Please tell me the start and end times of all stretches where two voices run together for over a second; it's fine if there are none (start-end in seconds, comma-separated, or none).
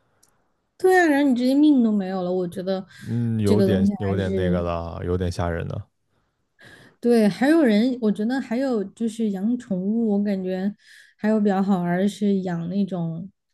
3.4-4.7